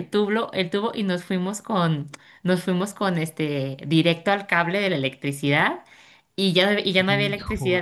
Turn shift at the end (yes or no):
no